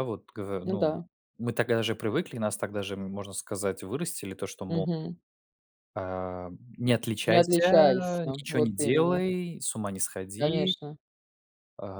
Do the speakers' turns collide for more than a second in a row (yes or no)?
yes